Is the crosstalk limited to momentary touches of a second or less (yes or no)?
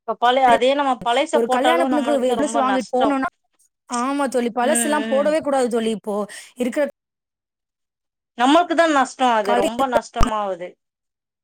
no